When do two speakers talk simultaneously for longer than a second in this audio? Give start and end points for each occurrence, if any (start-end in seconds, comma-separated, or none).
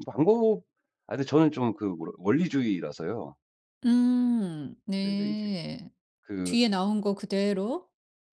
none